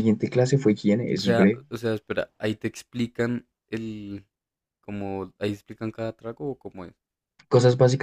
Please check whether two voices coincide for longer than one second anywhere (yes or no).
no